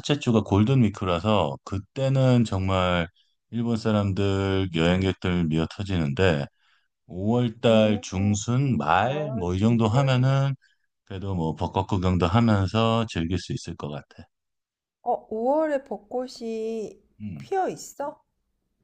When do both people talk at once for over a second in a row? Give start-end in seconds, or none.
9.0-10.3